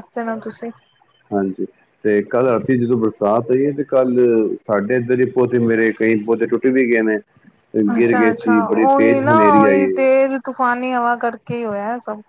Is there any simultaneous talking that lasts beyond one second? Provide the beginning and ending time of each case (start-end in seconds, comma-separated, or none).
8.0-9.9